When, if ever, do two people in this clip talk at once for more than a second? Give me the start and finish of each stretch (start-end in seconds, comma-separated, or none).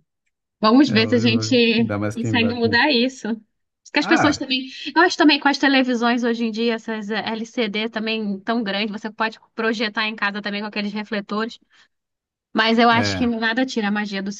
0.8-2.8